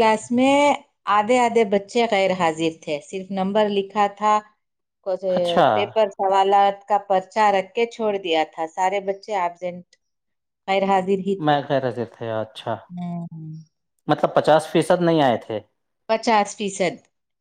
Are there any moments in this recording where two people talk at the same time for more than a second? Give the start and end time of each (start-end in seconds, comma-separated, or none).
none